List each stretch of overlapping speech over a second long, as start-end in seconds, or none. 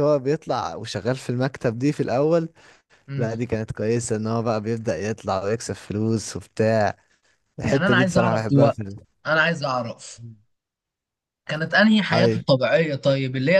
7.7-9.0